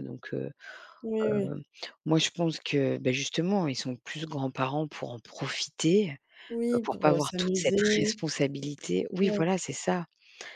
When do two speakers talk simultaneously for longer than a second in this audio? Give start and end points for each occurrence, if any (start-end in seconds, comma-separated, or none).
6.7-8.2